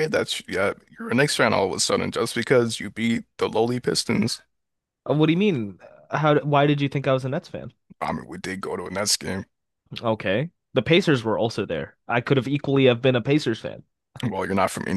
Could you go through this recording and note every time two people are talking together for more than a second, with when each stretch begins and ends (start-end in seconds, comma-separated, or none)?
none